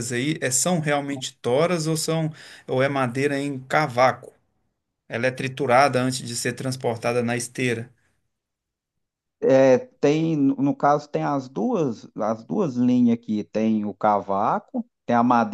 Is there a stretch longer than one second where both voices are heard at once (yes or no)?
no